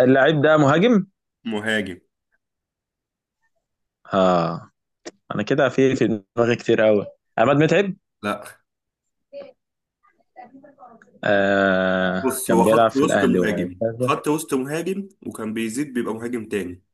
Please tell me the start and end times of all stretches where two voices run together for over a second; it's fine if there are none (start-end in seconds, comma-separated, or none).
12.2-14.1